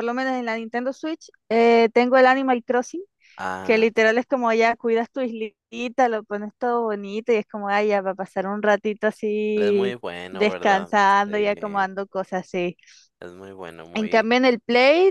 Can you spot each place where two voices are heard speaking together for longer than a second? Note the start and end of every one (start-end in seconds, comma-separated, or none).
9.6-11.5